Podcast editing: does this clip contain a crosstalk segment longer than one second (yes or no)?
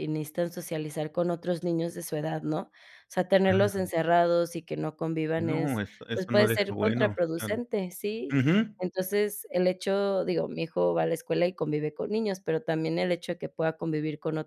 yes